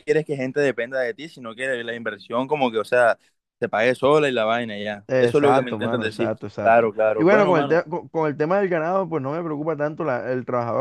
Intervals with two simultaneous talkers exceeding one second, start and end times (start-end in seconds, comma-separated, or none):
5.1-7.9